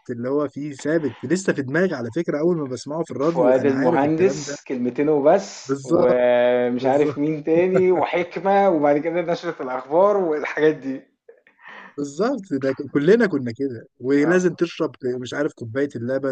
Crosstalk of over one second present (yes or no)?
yes